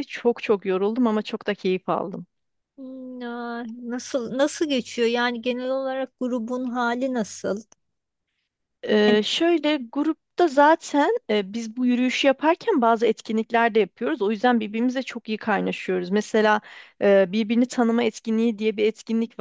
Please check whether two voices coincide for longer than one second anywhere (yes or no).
no